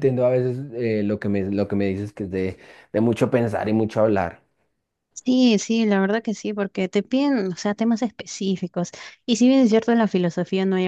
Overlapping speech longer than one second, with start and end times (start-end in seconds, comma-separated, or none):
none